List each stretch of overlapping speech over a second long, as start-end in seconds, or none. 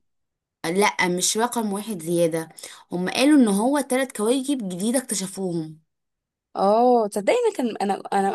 none